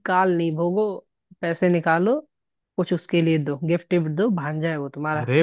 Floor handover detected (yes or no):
yes